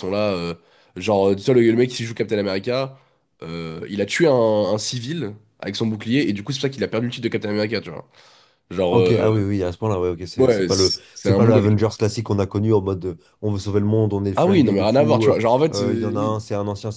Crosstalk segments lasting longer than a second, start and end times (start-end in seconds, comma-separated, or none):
10.4-11.9, 14.4-16.4